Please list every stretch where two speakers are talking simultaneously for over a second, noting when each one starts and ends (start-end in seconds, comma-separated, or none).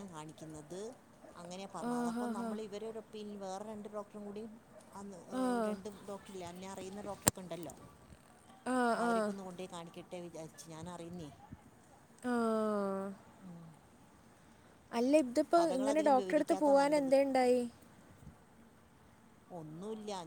15.6-17.1